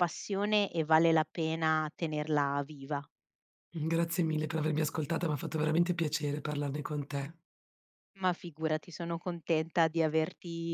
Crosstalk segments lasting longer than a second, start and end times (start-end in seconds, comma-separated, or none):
none